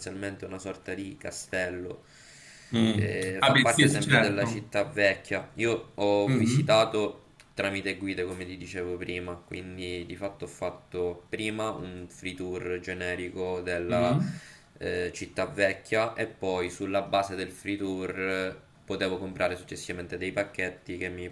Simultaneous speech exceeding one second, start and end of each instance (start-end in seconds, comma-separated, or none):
3.0-4.8